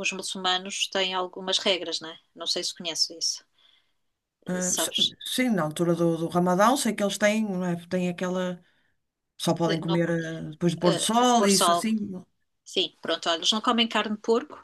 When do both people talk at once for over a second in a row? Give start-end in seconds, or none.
10.6-11.8